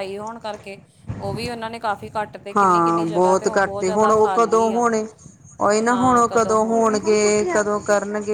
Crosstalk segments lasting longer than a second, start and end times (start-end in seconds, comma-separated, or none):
2.6-4.8